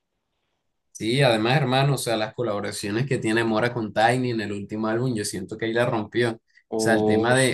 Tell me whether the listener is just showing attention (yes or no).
yes